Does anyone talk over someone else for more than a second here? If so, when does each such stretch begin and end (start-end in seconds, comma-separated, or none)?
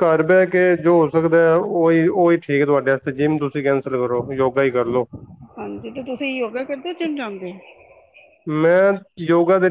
none